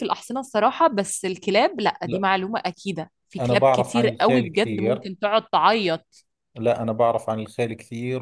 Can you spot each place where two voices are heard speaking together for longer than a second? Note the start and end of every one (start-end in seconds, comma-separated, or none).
3.4-5.1